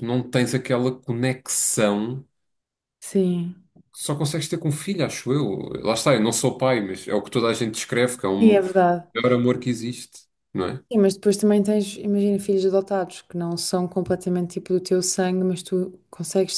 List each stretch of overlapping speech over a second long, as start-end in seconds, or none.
none